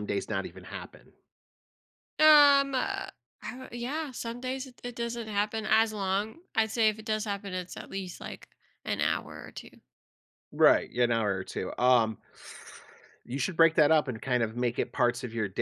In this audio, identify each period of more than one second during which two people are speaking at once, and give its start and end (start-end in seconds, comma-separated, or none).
none